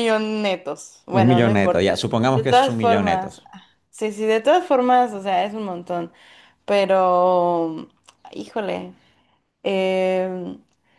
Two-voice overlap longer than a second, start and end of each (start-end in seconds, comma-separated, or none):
1.1-3.4